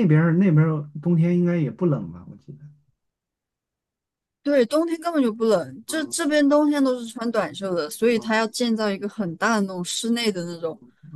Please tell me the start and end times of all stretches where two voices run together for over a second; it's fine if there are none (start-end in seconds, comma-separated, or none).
none